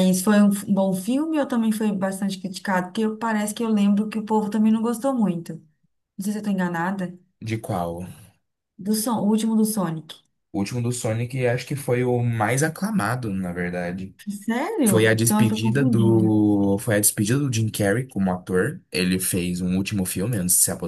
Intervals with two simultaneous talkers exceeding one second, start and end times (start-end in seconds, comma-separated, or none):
14.9-16.4